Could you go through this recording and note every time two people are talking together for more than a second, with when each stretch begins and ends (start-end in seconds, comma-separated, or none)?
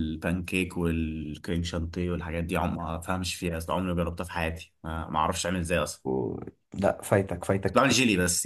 none